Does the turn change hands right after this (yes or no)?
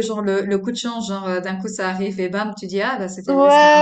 yes